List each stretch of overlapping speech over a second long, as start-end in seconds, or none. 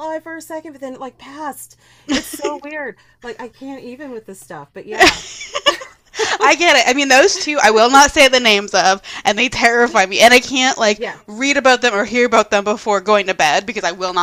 none